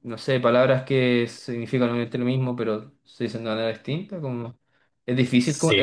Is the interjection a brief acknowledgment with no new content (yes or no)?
yes